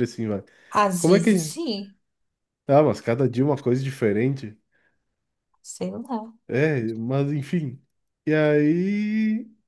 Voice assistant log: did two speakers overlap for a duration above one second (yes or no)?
no